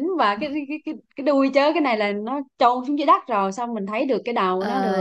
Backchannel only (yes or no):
no